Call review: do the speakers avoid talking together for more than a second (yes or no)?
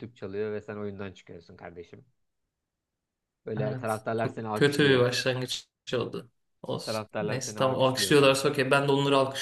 no